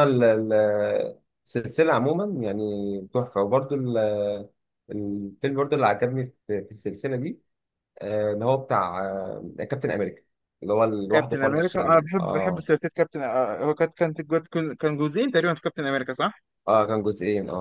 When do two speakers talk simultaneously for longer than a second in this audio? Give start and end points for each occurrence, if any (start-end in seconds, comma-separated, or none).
11.1-12.7